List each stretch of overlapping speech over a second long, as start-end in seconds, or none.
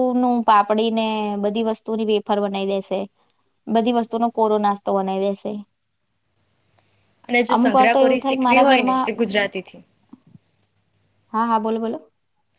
7.5-9.1